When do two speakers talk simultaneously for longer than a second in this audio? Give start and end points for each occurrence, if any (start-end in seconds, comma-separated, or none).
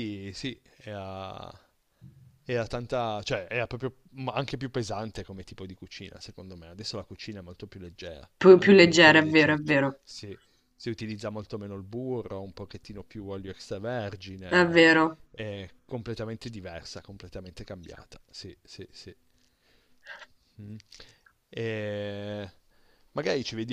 8.4-10.0